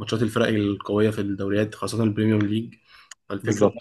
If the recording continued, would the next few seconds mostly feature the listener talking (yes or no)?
no